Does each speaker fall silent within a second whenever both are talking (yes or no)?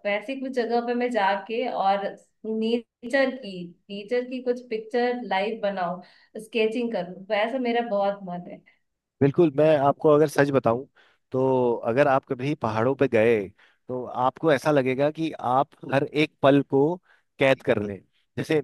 yes